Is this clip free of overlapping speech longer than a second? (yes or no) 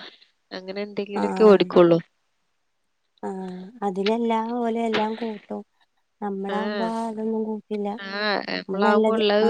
yes